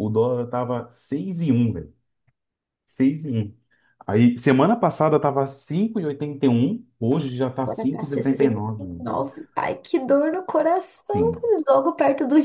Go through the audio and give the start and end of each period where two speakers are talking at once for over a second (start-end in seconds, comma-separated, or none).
7.7-9.1